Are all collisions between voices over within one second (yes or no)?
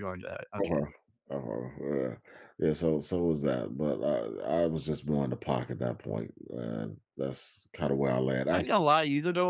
yes